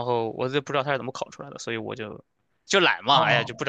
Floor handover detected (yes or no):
yes